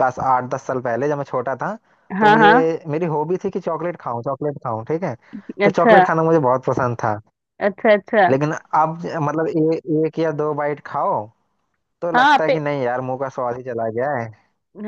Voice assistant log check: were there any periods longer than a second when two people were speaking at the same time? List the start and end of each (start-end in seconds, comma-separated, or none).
none